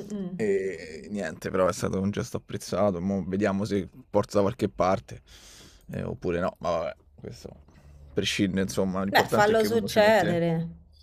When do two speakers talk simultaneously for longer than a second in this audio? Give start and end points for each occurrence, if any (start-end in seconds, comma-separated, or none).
9.1-10.4